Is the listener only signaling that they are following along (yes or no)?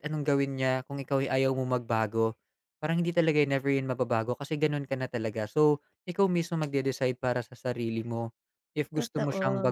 yes